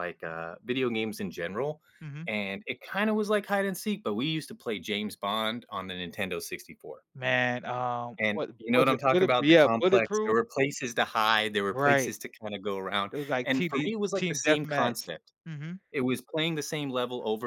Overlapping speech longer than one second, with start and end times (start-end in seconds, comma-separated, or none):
8.2-10.4, 13.1-15.0